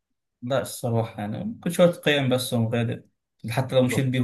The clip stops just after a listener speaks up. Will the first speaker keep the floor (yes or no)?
yes